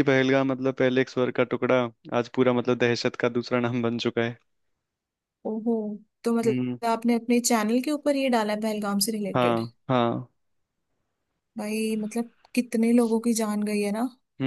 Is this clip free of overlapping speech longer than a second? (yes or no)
yes